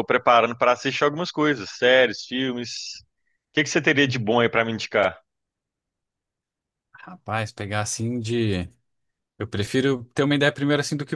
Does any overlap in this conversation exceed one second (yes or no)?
no